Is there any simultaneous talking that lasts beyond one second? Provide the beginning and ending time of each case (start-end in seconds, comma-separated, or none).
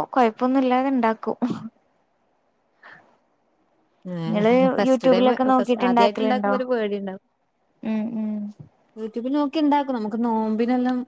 4.8-6.5